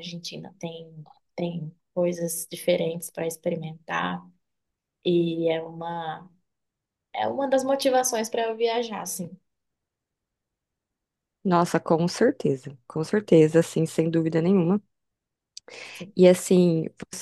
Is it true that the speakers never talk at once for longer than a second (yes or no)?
yes